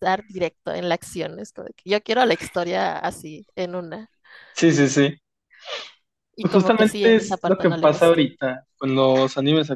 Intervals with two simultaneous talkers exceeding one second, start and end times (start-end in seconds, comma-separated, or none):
6.4-8.2